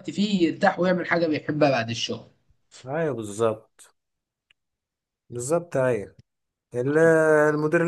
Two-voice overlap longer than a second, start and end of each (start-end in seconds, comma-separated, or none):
none